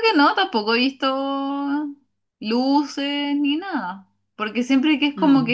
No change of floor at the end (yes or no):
yes